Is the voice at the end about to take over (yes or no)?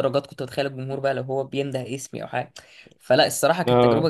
no